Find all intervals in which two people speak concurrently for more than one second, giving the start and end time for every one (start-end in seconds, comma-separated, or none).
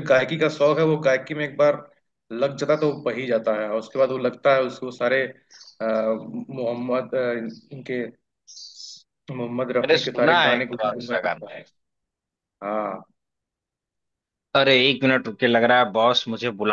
9.8-11.6